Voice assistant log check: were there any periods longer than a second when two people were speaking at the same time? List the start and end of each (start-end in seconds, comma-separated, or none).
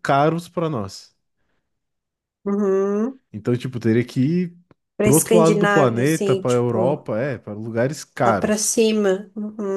5.0-7.0